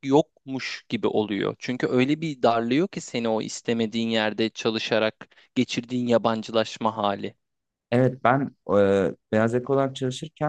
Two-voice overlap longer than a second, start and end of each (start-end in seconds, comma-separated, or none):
none